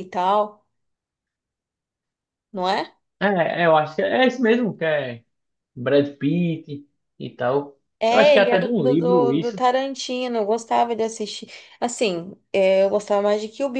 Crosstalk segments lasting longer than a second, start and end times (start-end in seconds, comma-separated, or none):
8.0-9.6